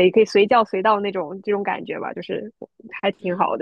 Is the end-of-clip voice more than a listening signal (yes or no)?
yes